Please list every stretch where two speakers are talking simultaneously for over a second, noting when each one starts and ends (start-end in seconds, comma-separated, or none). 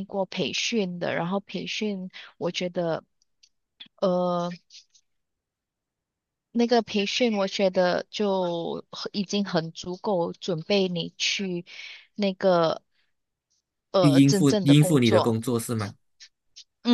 14.0-15.4